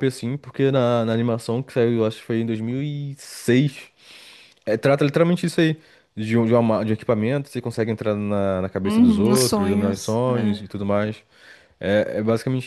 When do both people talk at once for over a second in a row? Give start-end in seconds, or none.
8.8-10.7